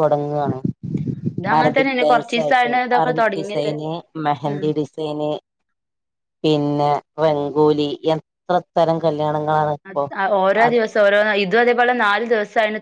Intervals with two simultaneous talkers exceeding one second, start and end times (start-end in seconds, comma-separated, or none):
1.6-3.7